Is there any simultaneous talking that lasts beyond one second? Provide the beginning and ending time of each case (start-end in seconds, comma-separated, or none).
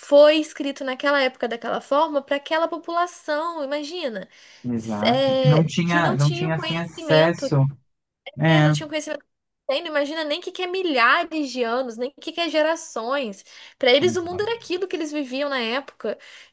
4.8-7.5